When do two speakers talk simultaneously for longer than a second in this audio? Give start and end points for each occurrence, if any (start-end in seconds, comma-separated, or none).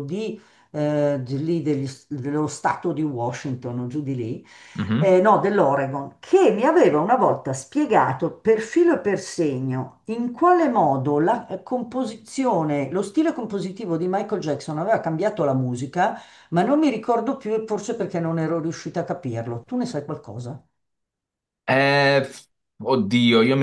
none